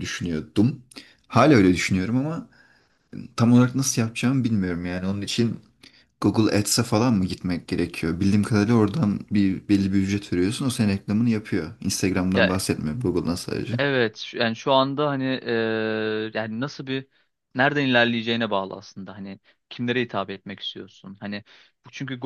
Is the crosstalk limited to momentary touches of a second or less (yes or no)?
yes